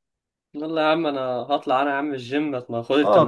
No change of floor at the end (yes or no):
no